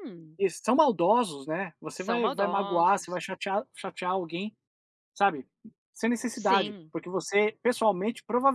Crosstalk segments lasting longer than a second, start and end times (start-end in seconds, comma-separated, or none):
1.9-3.2